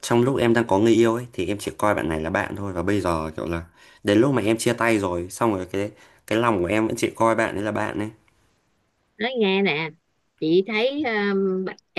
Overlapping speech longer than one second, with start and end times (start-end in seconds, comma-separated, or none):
none